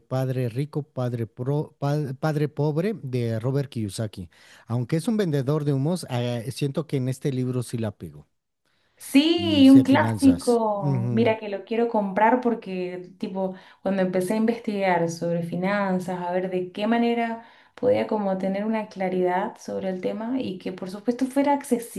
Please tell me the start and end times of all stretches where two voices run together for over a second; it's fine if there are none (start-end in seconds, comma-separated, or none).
9.3-11.3